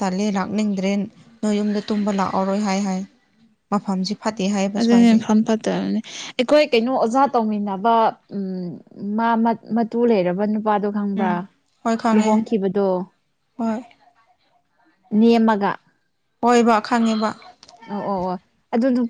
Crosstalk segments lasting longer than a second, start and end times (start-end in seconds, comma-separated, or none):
none